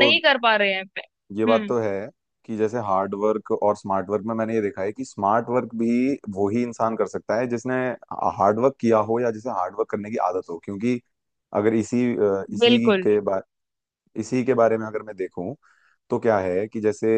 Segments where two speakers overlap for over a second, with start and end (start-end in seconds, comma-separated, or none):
none